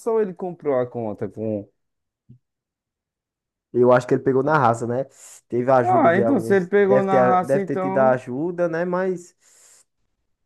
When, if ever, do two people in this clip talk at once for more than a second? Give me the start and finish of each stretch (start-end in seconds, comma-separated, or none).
5.8-8.2